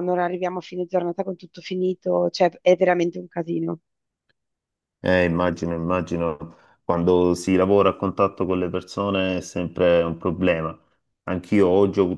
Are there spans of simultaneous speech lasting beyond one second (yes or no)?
no